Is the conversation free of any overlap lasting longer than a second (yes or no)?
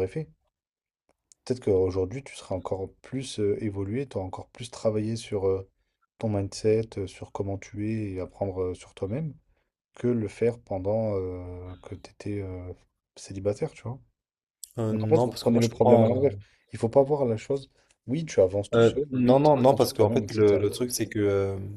no